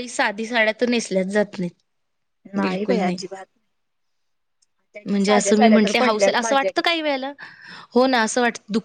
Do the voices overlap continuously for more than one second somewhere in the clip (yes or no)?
yes